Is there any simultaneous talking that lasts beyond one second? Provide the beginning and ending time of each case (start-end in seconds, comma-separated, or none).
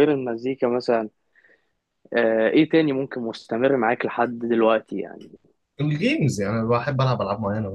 none